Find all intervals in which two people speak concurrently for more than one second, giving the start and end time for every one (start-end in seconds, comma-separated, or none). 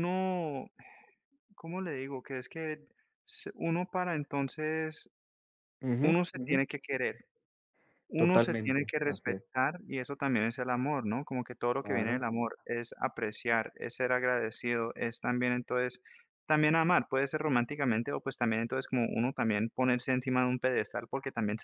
8.2-9.4